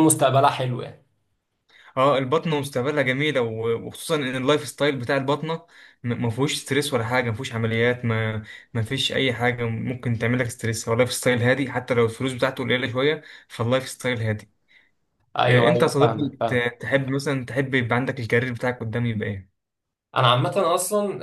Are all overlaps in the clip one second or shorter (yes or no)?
no